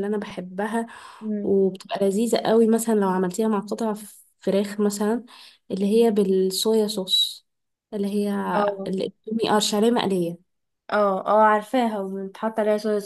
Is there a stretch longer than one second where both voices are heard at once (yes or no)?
no